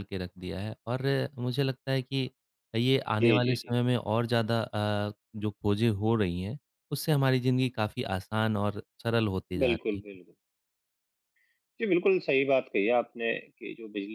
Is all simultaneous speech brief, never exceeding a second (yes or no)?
yes